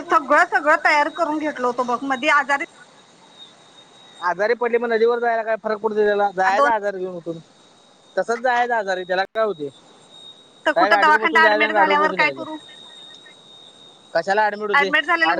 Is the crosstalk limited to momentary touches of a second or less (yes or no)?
no